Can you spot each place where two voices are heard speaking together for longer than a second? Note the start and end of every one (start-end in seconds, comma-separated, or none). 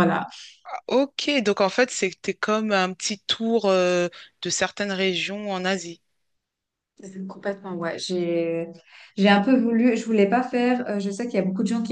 none